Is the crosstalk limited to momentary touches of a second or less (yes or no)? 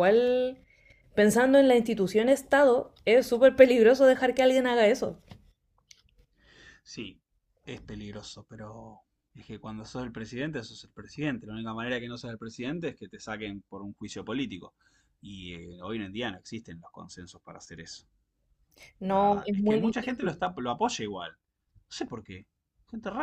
no